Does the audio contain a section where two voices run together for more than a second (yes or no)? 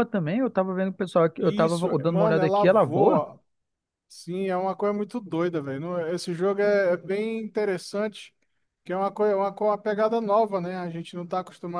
yes